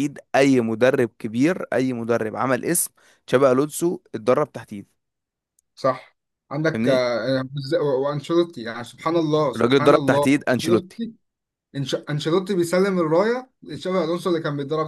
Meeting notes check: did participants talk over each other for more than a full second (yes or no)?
yes